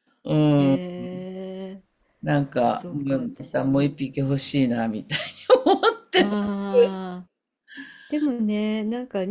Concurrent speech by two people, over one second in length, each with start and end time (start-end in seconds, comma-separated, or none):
2.6-3.9